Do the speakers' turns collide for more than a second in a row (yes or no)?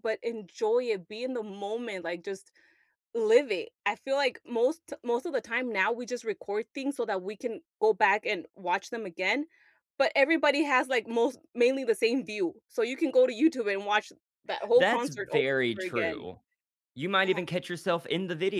yes